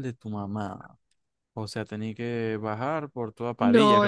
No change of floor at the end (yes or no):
no